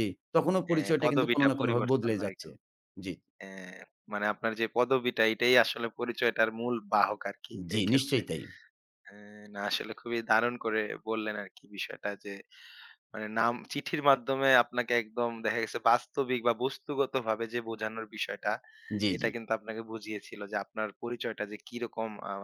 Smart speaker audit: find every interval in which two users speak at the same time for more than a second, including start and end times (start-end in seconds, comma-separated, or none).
0.7-2.5